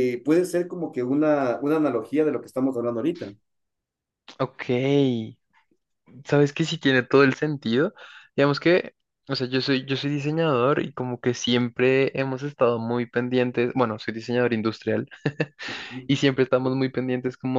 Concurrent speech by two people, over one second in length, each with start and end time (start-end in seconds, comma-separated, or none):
none